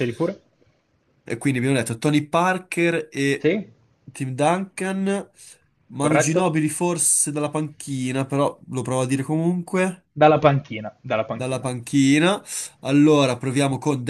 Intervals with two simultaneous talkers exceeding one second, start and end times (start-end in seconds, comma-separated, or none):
none